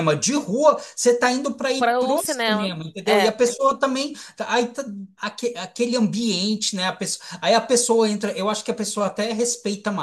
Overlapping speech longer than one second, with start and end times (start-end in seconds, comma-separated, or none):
1.8-3.3